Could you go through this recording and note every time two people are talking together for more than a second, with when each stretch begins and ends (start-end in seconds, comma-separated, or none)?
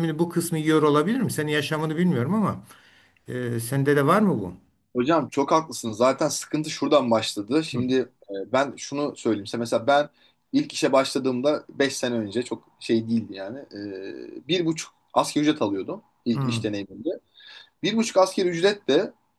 none